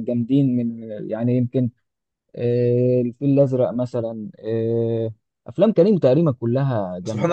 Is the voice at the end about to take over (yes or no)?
yes